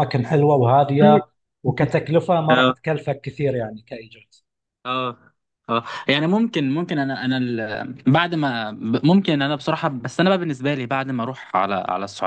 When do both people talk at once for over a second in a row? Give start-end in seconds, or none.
none